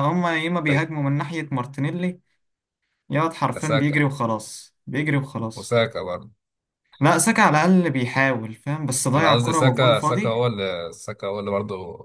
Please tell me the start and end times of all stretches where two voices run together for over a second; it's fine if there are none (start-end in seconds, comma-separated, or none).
9.2-10.4